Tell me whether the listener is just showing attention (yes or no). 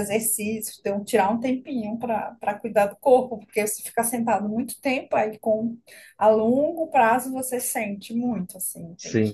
yes